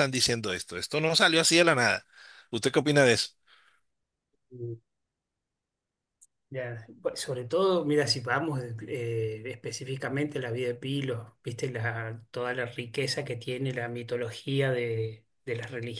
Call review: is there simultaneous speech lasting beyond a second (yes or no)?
no